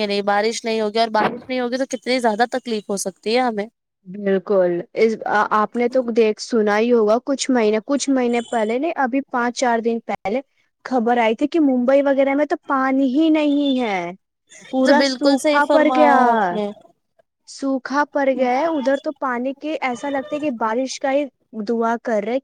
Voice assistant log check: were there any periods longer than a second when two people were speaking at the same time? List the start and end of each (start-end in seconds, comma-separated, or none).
14.8-16.6